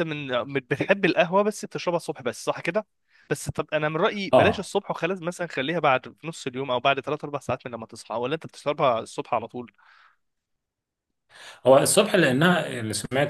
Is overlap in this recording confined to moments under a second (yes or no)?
yes